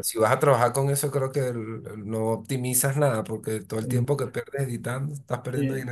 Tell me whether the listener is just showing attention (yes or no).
no